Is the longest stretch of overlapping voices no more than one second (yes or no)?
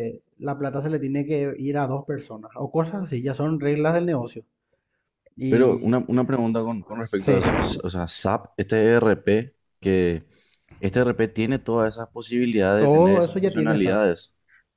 no